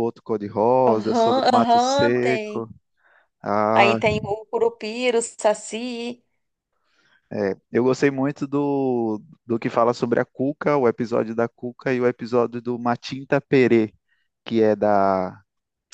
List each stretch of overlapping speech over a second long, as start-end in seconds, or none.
0.9-2.7